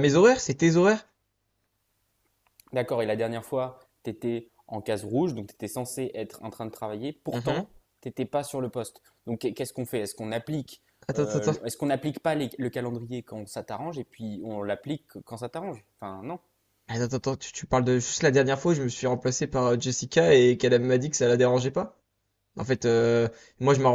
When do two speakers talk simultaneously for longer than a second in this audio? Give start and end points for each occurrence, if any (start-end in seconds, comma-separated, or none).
none